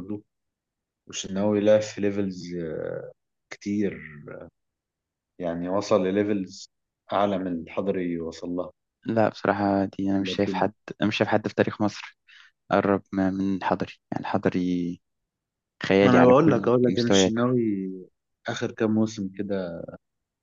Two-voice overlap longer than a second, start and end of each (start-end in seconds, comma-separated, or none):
16.0-17.3